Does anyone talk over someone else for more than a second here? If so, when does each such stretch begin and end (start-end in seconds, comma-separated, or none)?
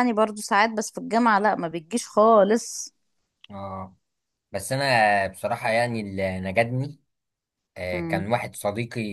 none